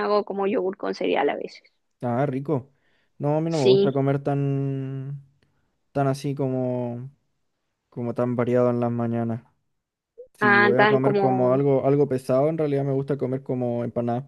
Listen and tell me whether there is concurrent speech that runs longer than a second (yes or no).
yes